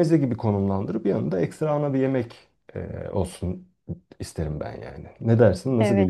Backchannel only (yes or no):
no